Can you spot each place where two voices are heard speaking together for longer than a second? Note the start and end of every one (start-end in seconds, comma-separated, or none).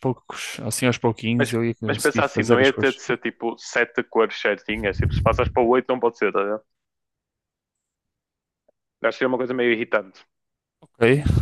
1.4-3.0